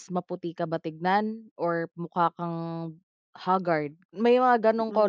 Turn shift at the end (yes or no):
yes